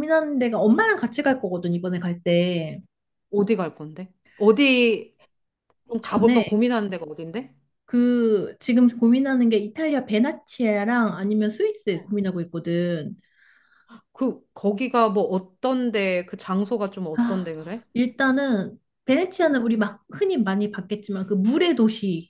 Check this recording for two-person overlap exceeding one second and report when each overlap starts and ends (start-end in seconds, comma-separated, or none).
none